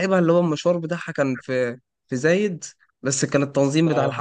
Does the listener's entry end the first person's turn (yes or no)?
no